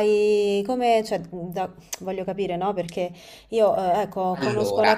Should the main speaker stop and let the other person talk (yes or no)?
no